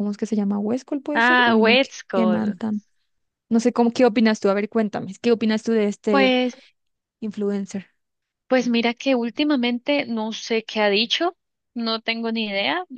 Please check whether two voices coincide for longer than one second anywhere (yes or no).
yes